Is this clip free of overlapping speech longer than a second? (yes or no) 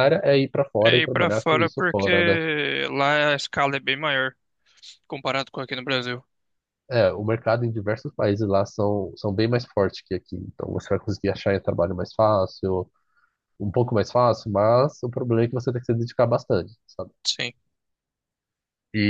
no